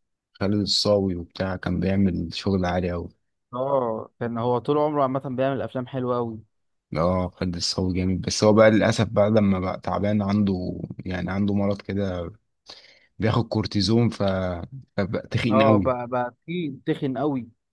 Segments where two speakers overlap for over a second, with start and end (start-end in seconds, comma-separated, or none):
none